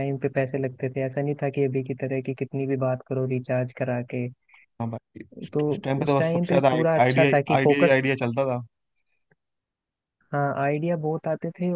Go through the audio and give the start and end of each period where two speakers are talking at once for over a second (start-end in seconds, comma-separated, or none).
6.0-8.0